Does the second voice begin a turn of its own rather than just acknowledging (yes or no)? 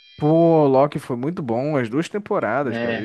no